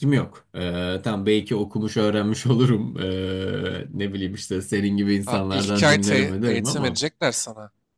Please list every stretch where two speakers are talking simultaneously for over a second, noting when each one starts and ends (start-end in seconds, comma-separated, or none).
5.3-7.0